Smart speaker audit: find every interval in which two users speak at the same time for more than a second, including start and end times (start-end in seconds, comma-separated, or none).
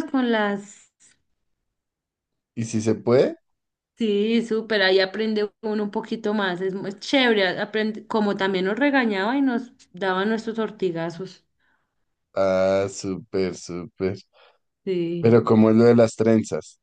none